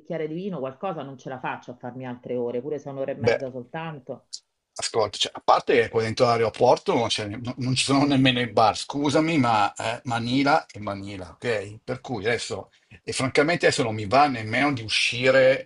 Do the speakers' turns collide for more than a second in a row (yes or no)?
no